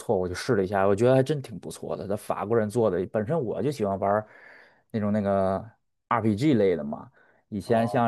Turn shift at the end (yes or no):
no